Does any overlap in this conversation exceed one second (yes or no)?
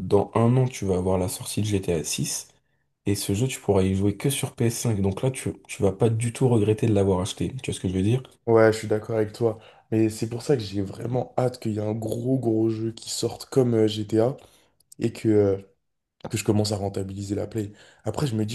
no